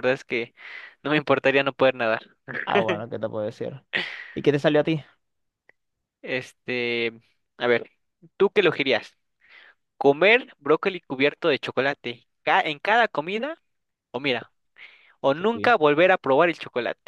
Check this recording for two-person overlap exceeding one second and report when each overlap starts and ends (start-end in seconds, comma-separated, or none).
none